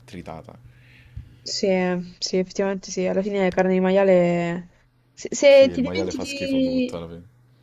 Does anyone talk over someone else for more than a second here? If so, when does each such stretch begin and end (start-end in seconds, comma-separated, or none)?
5.5-7.0